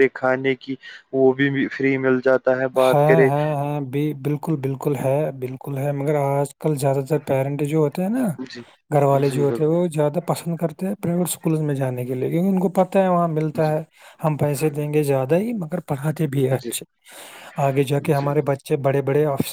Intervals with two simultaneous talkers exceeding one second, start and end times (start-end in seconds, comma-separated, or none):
none